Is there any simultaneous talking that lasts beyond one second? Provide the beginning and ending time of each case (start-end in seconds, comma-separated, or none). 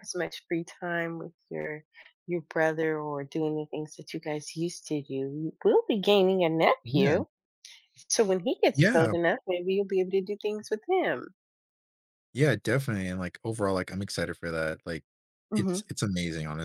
none